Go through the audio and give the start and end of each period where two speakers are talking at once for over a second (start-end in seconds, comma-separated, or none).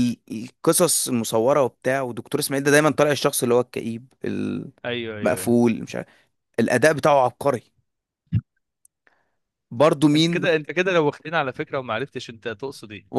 none